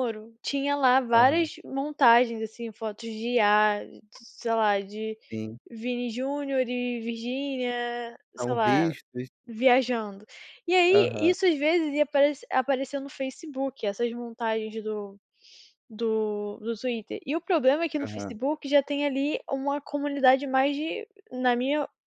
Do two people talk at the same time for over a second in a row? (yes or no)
no